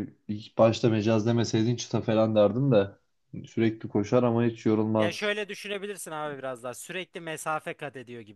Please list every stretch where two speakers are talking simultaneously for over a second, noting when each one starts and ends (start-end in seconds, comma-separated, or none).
none